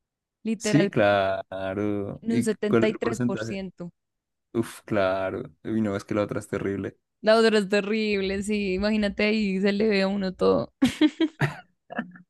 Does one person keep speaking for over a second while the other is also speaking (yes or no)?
yes